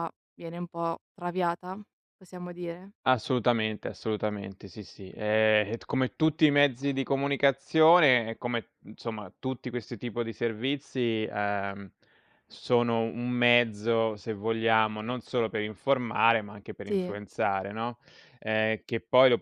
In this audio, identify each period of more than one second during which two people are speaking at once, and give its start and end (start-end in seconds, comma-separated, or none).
none